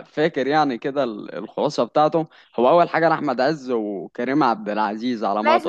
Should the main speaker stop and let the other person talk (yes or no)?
yes